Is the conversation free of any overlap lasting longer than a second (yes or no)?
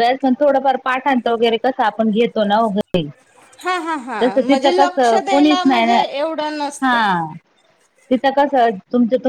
no